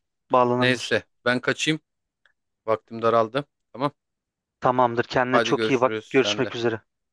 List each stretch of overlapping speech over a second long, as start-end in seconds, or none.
5.3-6.5